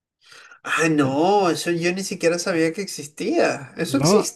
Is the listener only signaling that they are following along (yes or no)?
no